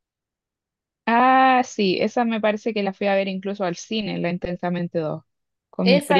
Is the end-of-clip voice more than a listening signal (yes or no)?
yes